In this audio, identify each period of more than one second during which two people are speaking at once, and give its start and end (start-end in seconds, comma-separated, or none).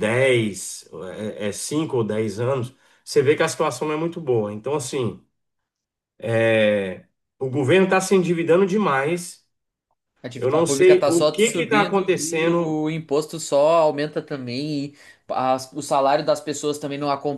10.4-12.8